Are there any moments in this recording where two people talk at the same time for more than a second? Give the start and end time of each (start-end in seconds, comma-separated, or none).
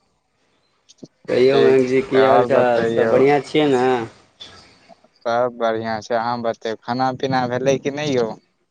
1.5-3.1